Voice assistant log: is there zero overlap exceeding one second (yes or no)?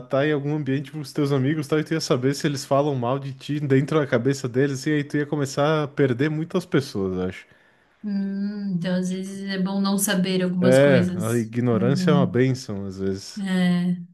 no